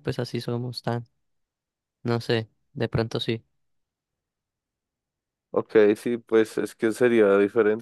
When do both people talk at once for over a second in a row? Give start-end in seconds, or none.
none